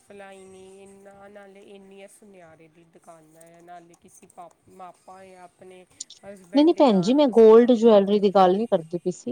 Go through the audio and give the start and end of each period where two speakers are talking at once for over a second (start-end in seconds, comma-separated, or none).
6.6-8.2